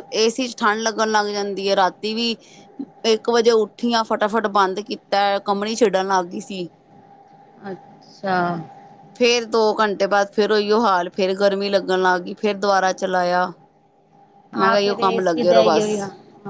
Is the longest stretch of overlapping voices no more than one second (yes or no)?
no